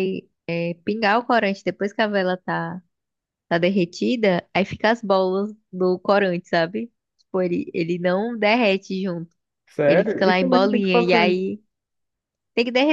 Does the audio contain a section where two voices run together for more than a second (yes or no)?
yes